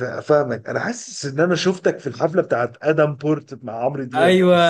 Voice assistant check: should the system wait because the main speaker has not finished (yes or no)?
no